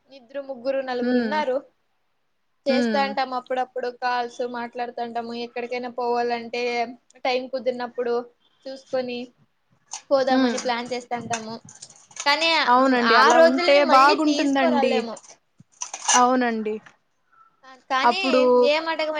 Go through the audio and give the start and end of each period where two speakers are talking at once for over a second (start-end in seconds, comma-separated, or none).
13.2-14.9